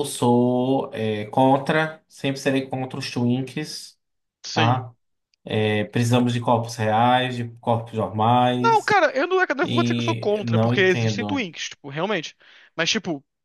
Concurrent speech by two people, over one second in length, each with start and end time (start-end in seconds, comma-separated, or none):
9.6-11.4